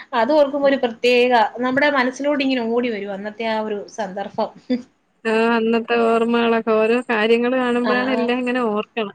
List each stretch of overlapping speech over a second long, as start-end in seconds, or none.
none